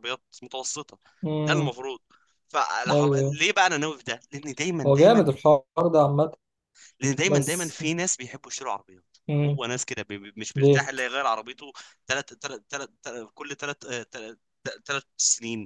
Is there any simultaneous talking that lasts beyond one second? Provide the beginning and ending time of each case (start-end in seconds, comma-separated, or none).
none